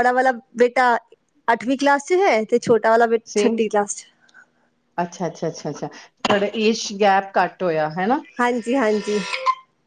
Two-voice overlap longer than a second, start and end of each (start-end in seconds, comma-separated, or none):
none